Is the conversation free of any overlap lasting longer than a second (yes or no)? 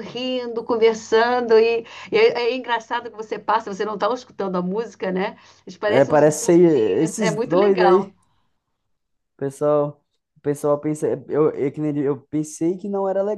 no